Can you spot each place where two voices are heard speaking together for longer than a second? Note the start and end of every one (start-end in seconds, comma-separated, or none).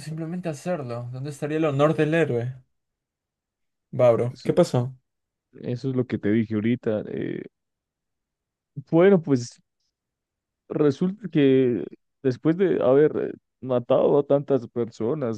none